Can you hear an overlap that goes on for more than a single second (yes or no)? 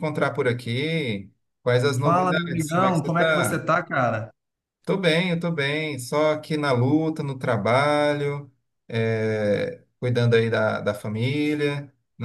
yes